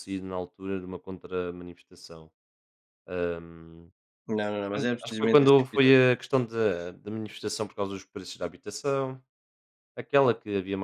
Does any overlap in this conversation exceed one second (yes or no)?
yes